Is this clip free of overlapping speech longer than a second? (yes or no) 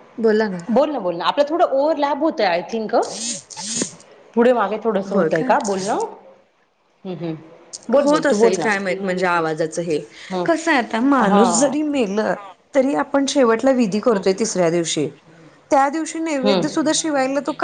yes